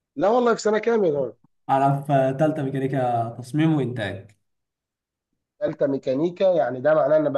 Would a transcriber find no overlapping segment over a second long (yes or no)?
yes